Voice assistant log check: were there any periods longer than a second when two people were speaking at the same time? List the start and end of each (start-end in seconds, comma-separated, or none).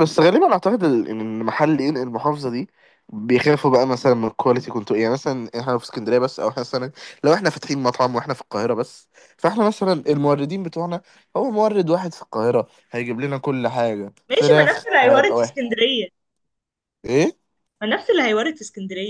14.3-15.7